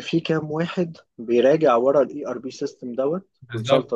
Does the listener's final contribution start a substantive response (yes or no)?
yes